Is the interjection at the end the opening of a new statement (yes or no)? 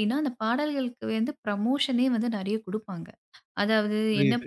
no